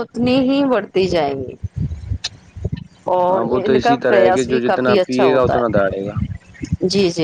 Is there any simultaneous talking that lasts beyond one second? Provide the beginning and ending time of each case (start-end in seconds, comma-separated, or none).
3.3-6.1